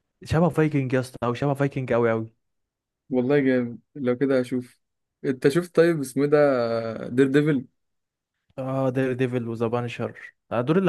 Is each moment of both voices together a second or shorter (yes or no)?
yes